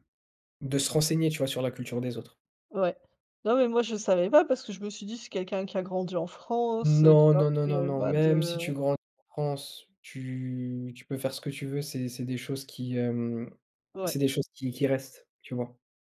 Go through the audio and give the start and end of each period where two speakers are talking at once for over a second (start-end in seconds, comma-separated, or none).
6.8-8.6